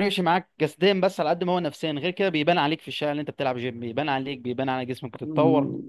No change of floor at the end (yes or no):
no